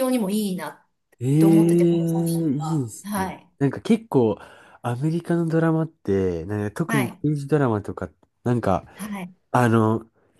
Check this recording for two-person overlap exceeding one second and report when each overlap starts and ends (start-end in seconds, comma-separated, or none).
1.4-3.5